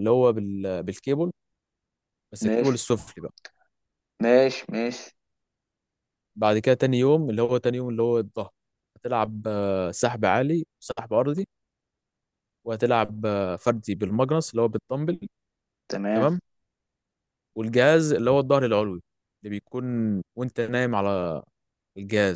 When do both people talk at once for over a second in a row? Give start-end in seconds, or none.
none